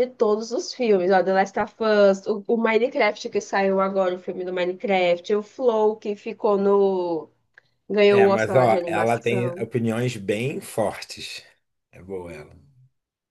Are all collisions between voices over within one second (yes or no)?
no